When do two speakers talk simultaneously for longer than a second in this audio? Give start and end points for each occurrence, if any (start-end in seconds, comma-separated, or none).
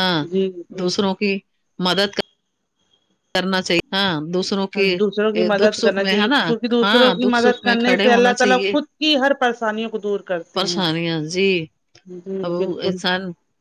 6.8-8.3